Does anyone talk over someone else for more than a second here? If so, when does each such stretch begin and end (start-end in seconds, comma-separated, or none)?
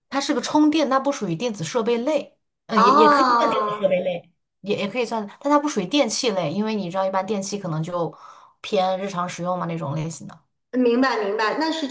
2.8-4.0